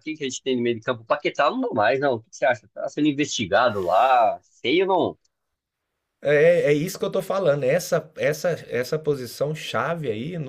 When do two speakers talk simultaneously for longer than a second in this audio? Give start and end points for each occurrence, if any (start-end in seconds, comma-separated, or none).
none